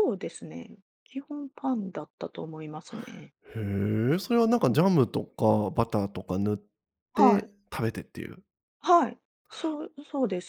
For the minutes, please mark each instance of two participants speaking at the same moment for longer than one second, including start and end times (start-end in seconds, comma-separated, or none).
none